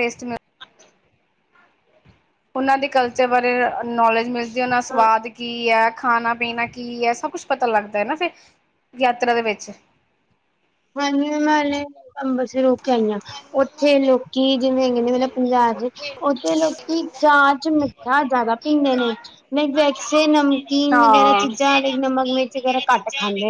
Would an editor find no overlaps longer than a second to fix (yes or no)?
yes